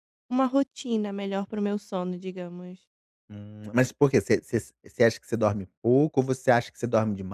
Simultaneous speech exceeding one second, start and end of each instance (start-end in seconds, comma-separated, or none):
none